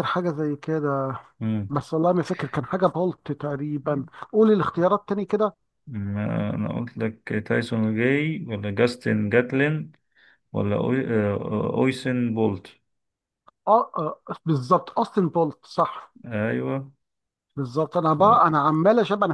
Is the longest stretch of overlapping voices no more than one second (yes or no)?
yes